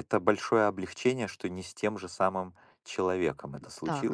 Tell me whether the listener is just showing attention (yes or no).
no